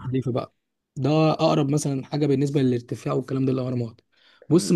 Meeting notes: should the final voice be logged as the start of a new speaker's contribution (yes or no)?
no